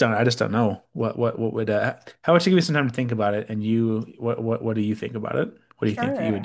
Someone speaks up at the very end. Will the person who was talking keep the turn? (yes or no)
no